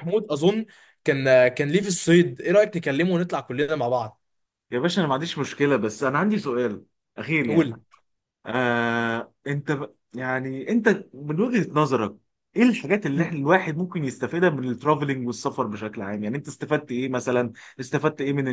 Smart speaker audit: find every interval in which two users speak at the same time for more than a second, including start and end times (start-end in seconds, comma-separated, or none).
none